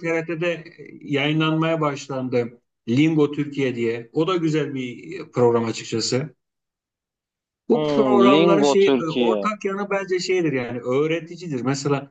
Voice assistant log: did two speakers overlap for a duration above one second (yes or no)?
yes